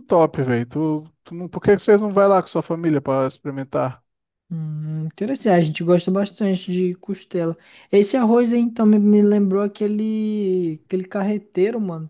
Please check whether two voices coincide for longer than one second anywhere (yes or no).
no